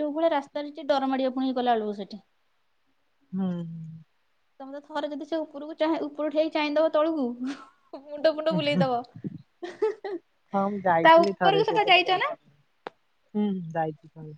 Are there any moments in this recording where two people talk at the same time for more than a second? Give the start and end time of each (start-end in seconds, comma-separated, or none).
10.5-12.3